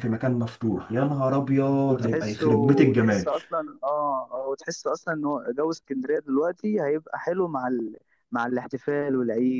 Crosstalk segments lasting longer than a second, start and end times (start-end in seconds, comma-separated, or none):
1.9-3.3